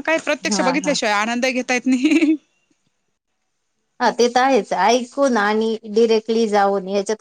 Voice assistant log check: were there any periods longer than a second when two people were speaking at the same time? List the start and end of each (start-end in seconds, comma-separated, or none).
none